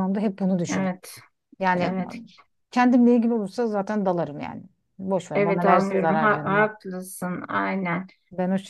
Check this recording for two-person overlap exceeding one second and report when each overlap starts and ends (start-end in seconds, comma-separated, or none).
5.3-6.7